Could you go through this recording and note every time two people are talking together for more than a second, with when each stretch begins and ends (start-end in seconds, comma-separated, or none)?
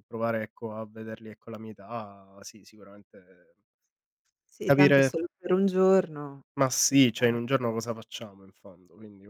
none